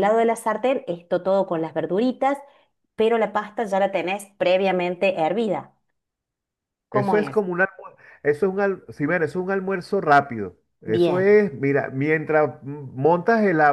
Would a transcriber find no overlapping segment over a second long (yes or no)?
yes